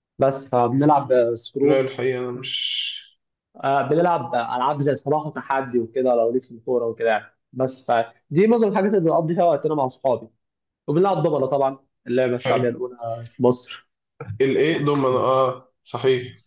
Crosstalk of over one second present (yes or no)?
no